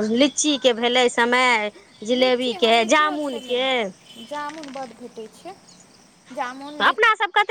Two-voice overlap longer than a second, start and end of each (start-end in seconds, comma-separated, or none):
2.2-3.6